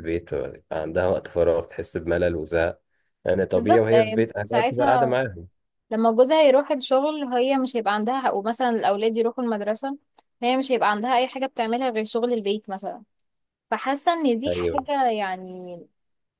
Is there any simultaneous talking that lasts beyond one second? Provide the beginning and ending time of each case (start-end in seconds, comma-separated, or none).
3.5-5.2